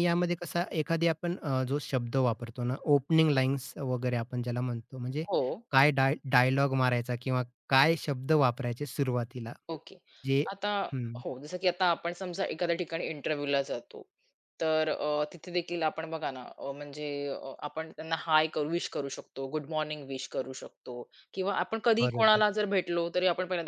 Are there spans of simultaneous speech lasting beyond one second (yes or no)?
no